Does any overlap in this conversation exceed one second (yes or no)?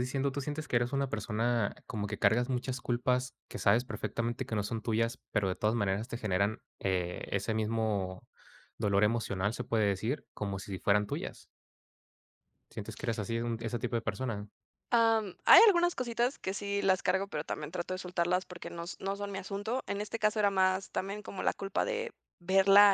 no